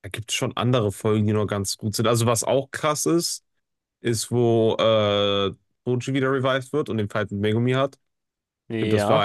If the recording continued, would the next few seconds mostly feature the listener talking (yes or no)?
no